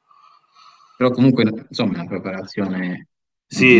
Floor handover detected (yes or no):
yes